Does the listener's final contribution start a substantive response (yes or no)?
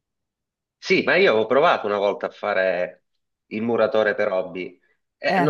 no